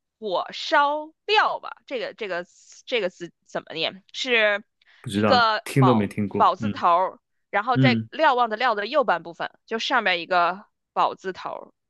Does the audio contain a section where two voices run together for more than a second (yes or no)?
yes